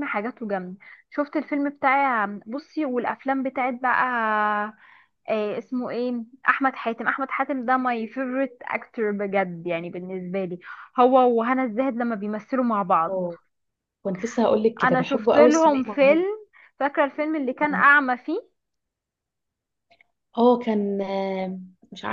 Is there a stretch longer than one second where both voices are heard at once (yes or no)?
yes